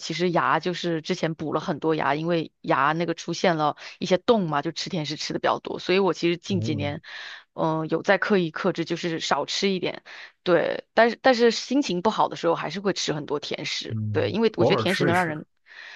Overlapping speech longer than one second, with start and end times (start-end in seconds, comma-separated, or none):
13.9-15.4